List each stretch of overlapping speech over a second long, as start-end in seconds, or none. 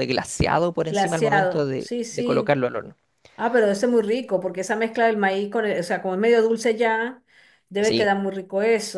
0.9-2.6